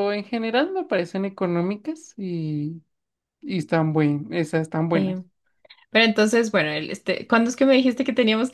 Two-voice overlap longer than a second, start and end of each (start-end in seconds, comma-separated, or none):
none